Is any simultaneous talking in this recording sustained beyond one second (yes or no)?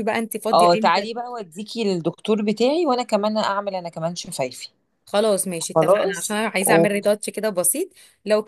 yes